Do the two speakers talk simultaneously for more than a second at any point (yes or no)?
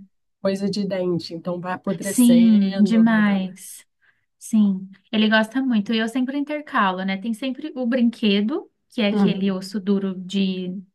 yes